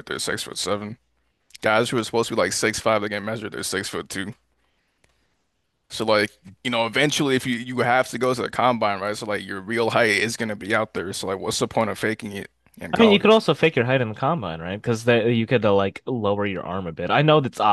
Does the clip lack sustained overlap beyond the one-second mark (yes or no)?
yes